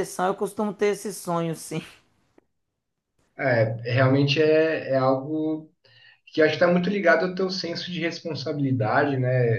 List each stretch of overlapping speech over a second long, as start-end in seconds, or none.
none